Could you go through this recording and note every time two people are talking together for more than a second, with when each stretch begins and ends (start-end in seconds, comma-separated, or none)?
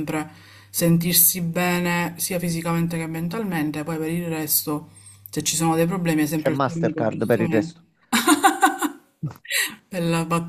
6.3-7.8